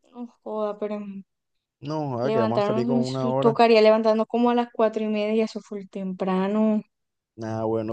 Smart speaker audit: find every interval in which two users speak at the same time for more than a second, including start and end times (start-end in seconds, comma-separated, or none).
2.2-3.5